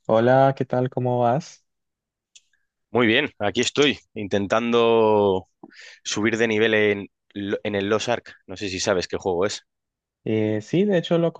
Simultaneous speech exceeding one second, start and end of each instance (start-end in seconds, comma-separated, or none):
none